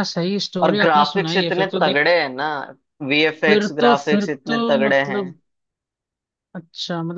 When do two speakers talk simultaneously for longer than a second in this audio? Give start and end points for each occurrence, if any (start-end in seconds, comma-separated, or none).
0.6-2.0, 3.5-5.2